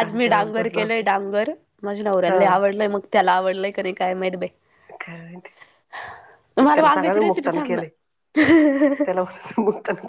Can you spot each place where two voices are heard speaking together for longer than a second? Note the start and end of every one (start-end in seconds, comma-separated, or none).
6.6-7.9